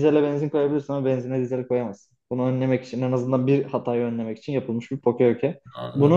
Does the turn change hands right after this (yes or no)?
yes